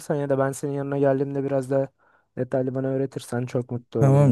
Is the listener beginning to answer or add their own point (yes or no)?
yes